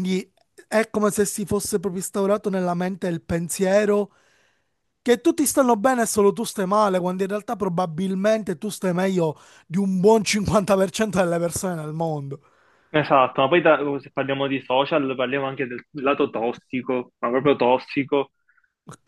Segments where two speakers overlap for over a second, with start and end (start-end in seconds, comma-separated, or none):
none